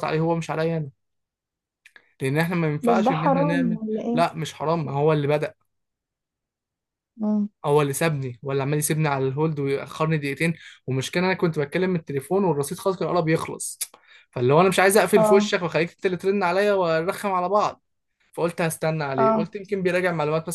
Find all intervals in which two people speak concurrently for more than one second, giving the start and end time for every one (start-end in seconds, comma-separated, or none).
2.8-4.2